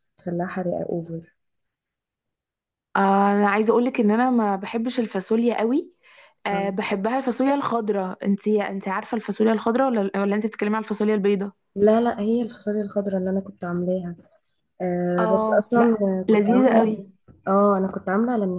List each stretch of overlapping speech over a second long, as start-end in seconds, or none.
15.2-16.9